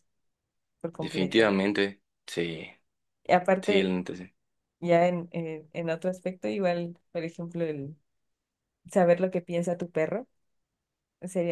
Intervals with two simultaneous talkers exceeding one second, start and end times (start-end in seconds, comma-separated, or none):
none